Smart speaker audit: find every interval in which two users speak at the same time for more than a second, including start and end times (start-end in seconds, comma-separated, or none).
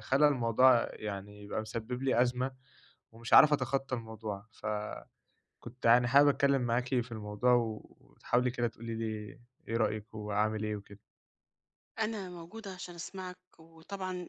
none